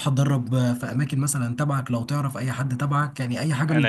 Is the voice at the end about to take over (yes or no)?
no